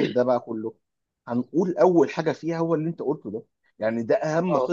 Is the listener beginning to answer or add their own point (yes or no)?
no